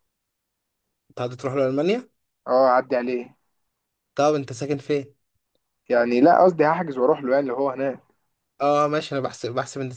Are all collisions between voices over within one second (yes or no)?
yes